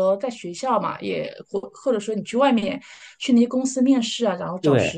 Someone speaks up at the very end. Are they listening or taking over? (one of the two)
taking over